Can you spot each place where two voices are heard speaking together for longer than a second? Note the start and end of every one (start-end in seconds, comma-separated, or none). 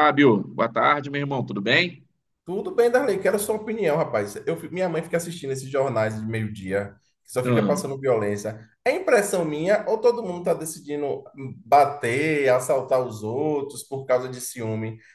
none